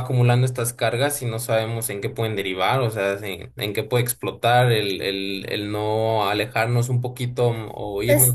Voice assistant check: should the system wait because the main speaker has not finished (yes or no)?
yes